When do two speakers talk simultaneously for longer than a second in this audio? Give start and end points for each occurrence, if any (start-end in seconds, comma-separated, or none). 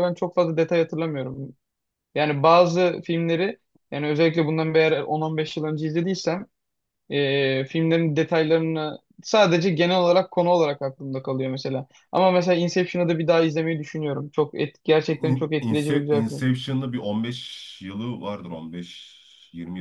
15.2-16.4